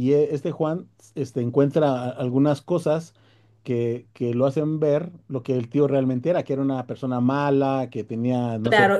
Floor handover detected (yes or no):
yes